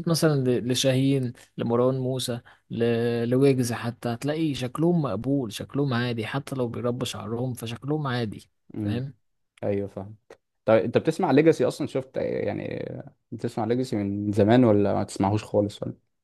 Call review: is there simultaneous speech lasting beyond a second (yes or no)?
no